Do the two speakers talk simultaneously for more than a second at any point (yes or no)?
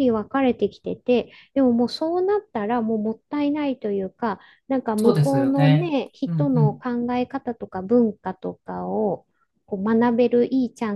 yes